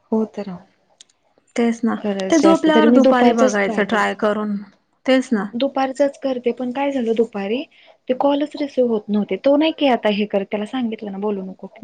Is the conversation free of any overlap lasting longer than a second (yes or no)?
no